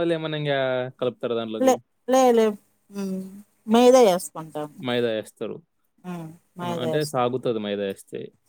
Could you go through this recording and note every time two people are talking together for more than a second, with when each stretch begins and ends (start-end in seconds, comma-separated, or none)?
none